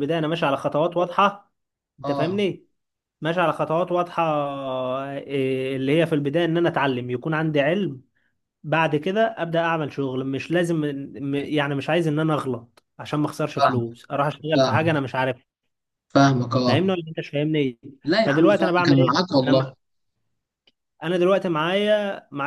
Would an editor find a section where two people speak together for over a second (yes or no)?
yes